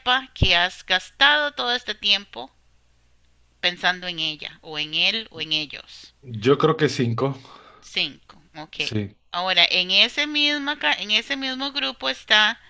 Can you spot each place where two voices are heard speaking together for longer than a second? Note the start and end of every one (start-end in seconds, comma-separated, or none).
none